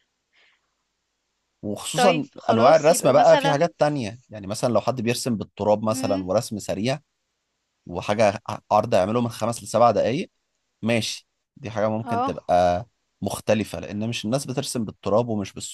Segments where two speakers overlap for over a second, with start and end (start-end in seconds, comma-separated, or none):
1.9-3.7